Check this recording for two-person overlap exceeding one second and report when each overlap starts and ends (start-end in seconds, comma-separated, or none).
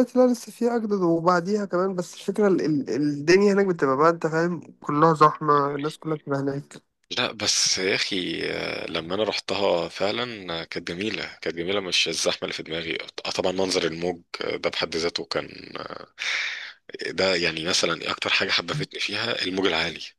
none